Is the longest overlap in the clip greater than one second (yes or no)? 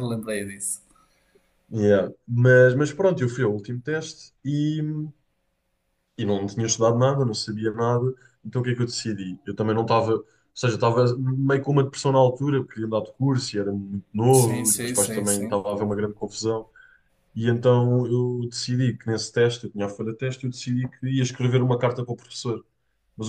yes